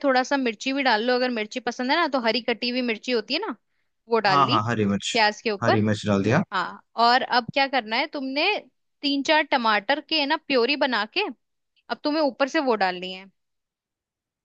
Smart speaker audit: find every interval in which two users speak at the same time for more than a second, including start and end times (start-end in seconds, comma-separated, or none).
none